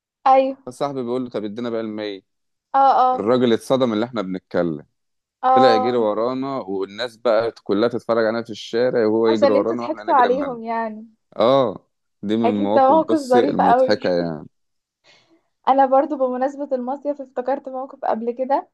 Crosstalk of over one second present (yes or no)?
yes